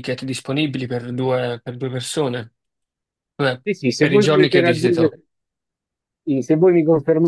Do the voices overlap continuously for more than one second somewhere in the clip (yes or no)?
yes